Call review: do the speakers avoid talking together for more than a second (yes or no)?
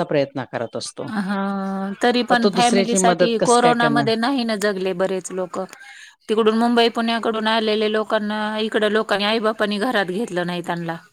no